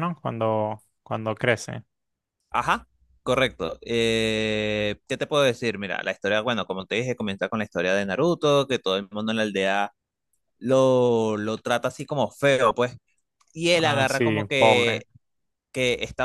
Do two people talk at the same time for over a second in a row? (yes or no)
yes